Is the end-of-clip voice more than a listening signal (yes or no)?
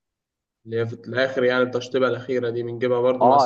yes